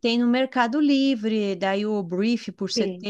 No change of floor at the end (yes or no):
yes